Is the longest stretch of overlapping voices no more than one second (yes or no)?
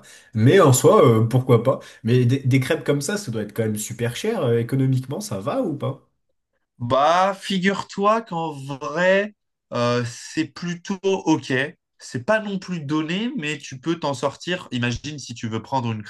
yes